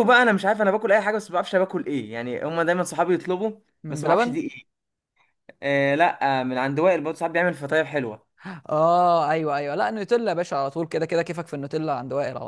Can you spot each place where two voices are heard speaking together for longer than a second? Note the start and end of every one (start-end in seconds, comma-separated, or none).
none